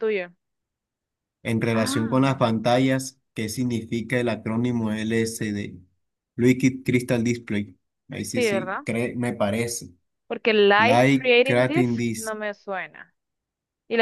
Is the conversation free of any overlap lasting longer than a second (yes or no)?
no